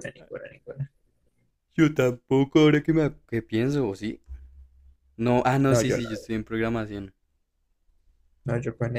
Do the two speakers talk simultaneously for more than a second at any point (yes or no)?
no